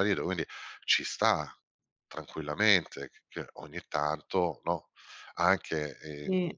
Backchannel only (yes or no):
yes